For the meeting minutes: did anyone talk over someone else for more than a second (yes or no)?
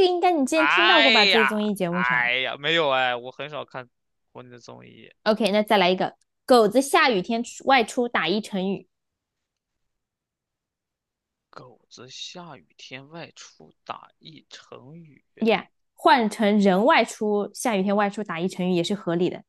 yes